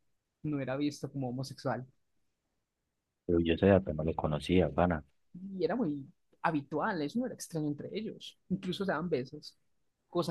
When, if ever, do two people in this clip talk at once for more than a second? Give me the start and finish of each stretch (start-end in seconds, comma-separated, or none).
none